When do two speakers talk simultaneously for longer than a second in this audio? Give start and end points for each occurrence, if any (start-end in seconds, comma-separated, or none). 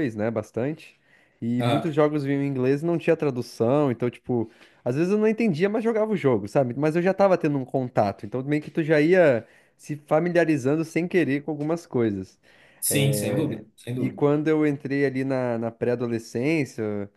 12.9-14.2